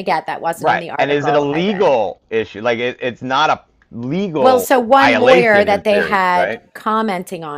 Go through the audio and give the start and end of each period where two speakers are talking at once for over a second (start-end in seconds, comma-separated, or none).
0.6-2.0, 4.4-6.6